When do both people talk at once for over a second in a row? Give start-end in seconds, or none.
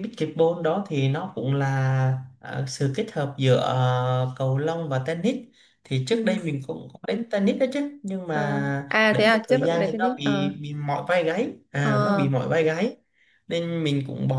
8.3-10.5